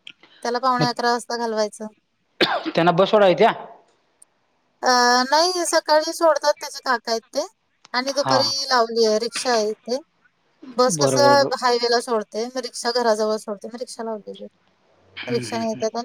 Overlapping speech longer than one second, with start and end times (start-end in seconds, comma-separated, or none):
none